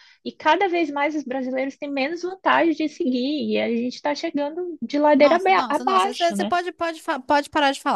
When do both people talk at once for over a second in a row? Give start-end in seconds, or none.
5.2-6.5